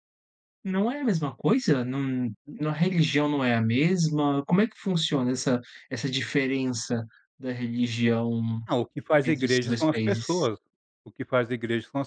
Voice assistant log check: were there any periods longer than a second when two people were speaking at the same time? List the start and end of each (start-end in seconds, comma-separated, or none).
9.2-10.5